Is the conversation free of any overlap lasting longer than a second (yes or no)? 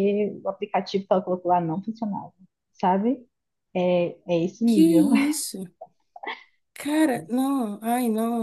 yes